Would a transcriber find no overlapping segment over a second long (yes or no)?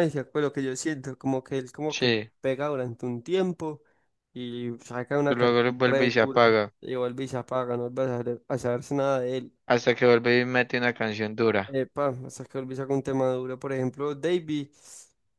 no